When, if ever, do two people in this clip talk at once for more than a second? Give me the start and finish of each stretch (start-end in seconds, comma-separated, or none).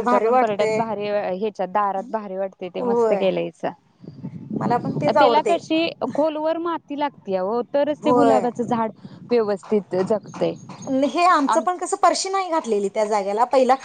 none